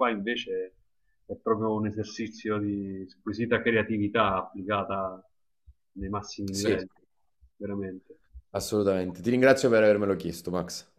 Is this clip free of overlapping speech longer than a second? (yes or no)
yes